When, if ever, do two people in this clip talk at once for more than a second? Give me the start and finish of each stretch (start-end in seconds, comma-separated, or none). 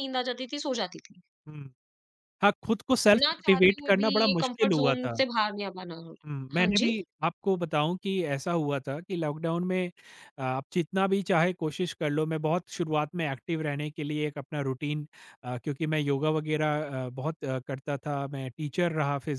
3.2-5.2